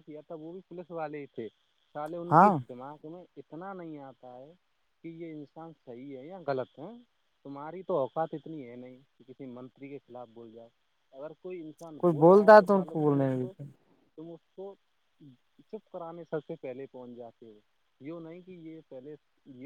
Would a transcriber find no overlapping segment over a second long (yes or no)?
no